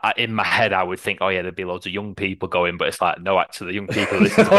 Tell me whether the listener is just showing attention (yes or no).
yes